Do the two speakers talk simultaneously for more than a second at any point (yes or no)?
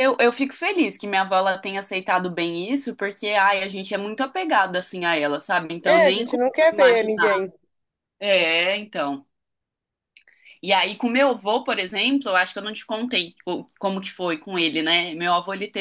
yes